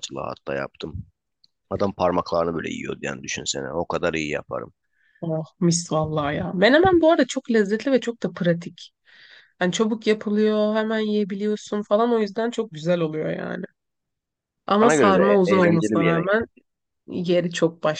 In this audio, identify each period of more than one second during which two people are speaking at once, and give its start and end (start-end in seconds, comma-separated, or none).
14.8-16.4